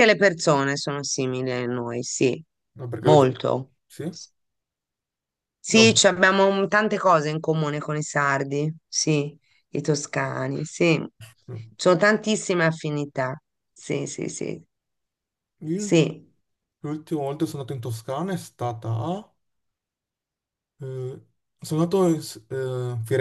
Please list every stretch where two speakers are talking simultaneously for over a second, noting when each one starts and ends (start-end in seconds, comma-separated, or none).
none